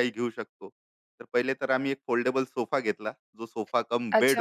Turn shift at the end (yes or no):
yes